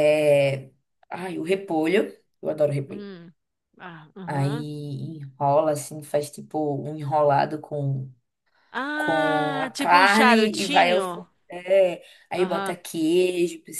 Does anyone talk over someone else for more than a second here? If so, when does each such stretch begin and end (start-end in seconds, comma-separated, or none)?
8.9-11.3